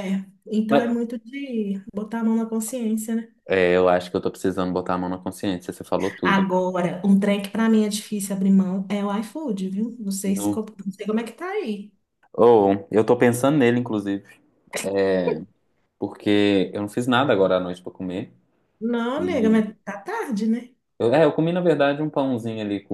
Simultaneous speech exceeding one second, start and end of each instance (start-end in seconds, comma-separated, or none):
none